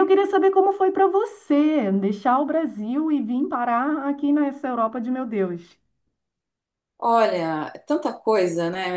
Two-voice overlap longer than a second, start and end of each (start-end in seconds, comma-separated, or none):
none